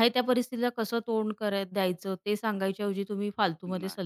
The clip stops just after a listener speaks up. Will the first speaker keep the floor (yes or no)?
yes